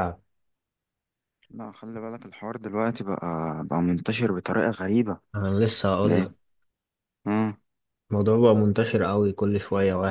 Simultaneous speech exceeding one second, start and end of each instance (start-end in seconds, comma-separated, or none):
none